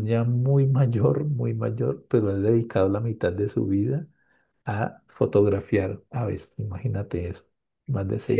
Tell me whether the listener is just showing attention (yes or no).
no